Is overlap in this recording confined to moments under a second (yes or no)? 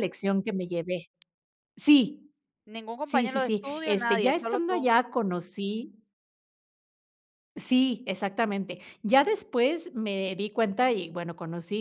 no